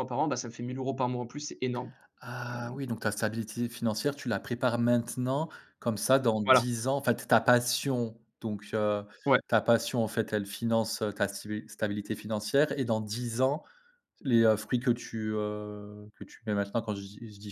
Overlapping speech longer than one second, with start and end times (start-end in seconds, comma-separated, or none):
none